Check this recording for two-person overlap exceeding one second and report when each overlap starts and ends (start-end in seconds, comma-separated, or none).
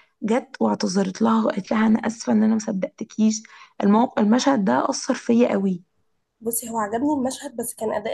none